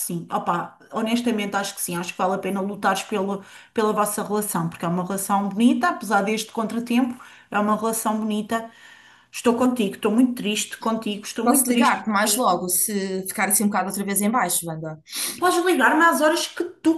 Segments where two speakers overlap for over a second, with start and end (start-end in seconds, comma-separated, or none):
11.4-12.7